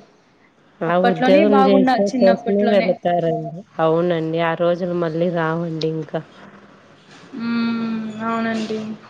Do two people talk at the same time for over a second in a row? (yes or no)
yes